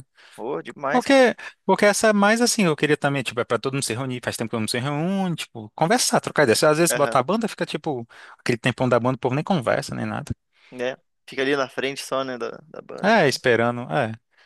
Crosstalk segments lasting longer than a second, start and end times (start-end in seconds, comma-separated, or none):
none